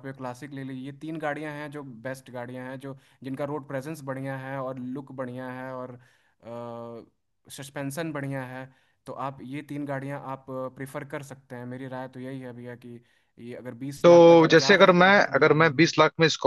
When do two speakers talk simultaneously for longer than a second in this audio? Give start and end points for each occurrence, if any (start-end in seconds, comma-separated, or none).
14.0-15.9